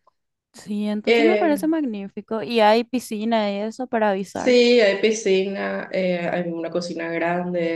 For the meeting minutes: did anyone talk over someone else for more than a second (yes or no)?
no